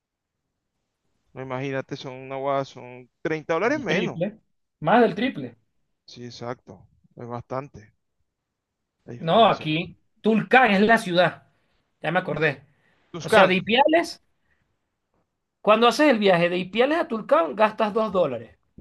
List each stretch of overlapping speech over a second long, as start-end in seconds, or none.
none